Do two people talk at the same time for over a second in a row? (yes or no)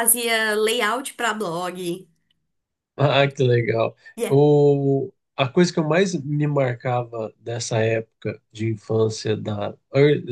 no